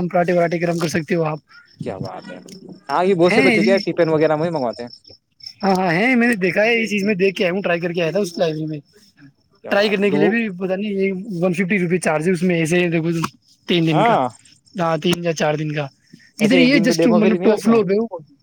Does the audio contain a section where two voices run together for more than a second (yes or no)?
yes